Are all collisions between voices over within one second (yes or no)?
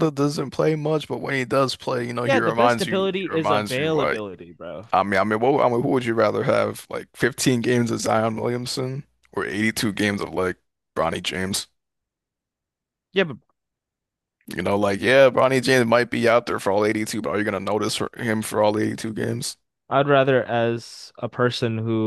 no